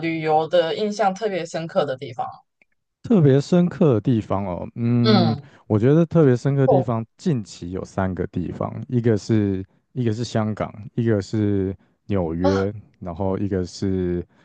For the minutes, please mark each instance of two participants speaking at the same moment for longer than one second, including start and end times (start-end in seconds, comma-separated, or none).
none